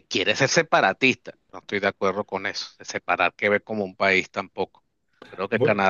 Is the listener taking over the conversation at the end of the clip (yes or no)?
no